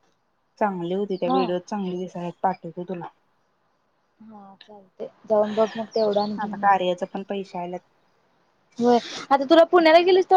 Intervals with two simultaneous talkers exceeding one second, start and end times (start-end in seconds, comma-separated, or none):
none